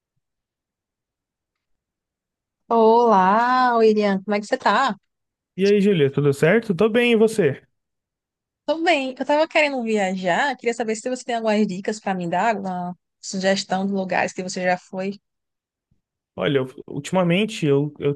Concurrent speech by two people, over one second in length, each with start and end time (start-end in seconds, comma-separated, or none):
none